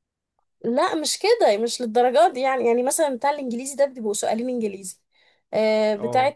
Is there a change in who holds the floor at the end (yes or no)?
no